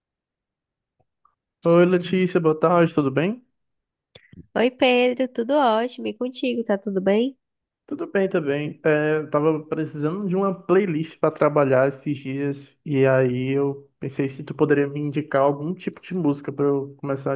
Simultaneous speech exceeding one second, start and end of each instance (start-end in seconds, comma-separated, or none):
none